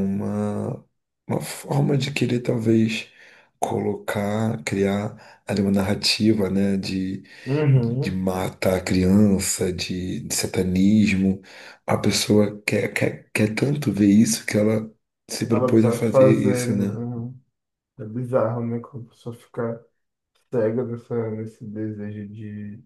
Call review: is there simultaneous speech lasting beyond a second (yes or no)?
yes